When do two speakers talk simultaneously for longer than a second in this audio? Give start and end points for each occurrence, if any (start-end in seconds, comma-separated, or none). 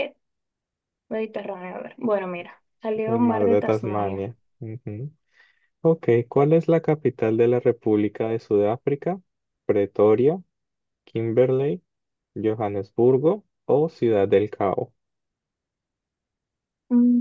3.1-4.3